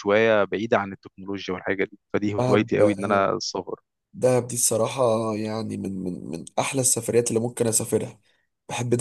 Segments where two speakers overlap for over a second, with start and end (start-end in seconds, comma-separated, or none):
none